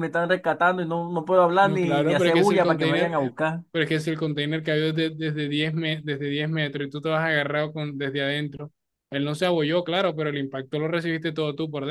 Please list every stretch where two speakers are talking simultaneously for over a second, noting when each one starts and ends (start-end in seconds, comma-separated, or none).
1.6-3.3